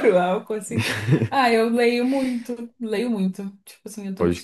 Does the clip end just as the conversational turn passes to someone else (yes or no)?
no